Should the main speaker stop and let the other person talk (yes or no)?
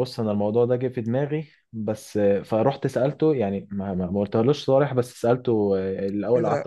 no